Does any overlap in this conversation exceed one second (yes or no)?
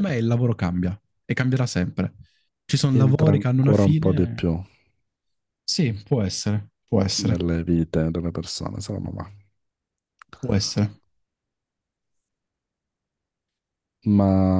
yes